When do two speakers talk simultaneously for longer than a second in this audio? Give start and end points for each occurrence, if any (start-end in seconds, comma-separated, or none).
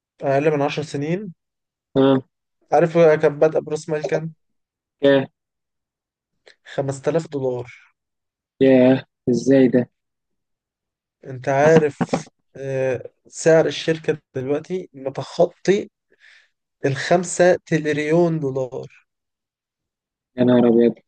none